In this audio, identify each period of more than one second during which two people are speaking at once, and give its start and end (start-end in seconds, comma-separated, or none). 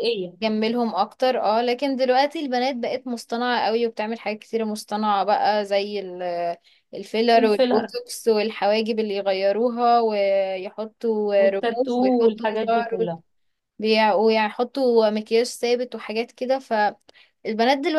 11.4-13.0